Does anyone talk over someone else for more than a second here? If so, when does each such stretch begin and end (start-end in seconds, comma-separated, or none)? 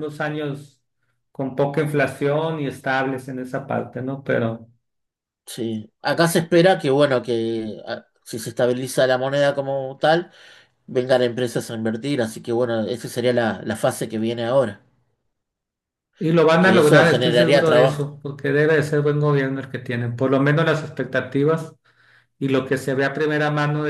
16.6-18.1